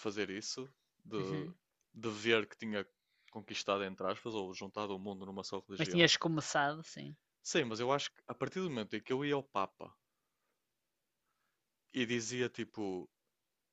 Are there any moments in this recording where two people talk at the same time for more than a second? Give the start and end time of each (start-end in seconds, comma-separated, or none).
none